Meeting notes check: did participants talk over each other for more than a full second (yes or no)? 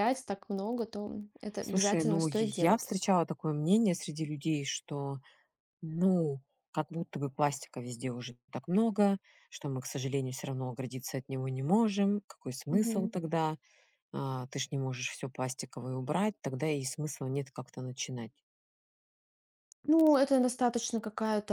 yes